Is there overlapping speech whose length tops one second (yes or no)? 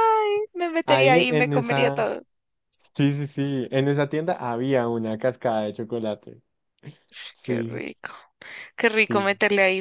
yes